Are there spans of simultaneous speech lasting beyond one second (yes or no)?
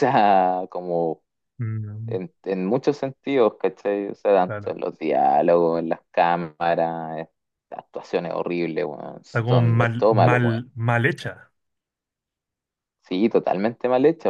yes